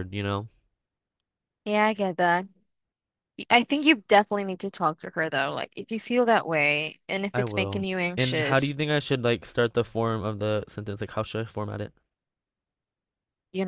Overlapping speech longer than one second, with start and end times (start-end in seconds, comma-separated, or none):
7.3-8.7